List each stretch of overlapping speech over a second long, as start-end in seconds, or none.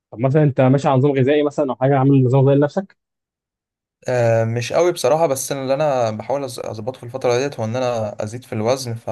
none